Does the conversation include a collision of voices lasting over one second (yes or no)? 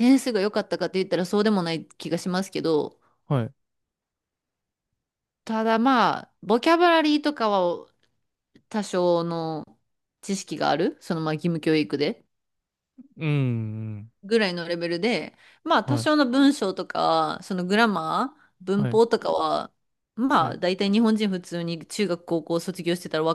no